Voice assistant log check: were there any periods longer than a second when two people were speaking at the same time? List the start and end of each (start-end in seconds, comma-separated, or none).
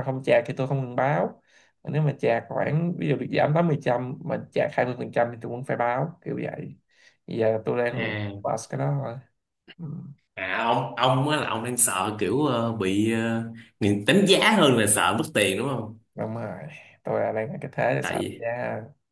none